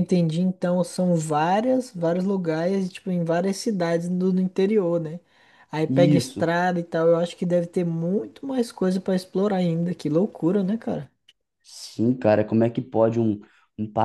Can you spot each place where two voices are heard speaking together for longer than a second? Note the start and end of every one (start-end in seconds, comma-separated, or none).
none